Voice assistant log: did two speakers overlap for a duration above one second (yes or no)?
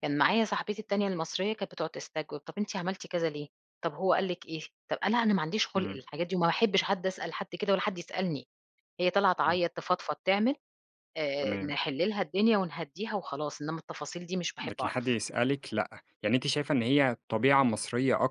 no